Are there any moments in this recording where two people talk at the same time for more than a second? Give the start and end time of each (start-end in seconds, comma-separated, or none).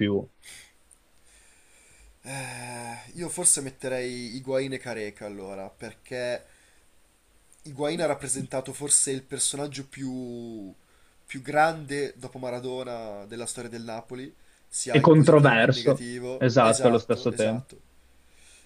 15.0-17.7